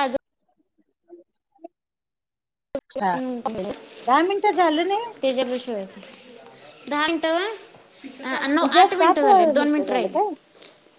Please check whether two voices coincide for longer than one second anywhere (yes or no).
yes